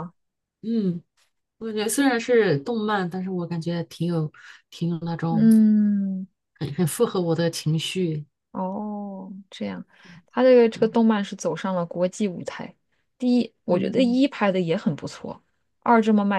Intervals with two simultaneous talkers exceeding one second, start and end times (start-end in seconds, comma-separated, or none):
none